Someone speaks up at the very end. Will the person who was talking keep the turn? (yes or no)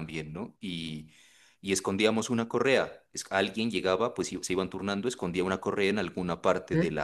yes